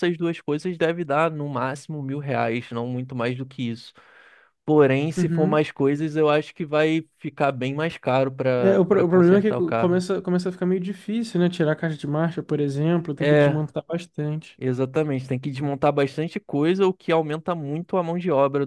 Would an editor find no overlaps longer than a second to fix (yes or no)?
no